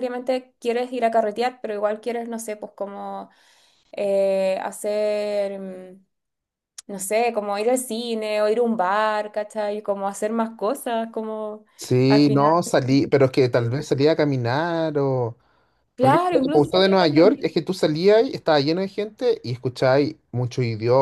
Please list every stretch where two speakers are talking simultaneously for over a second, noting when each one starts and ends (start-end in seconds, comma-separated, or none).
16.0-17.4